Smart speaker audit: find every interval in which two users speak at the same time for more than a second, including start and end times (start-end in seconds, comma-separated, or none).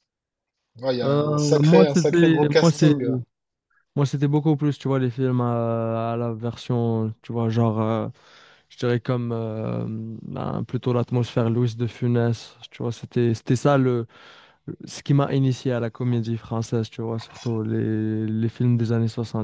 1.0-3.0